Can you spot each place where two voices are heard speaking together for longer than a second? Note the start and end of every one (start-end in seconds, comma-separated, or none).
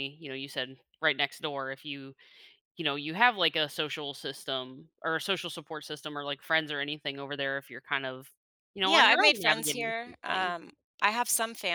8.8-10.5